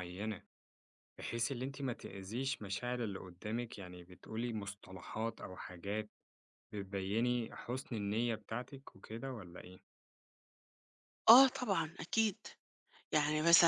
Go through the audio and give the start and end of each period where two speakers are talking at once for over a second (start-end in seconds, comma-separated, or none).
none